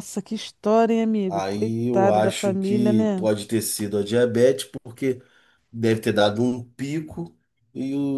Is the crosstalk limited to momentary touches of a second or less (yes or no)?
no